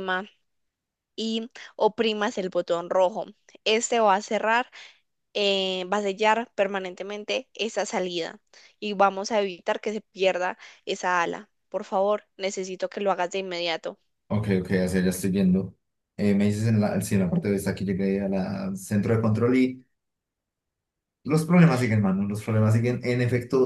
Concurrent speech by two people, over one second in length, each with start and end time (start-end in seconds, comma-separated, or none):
none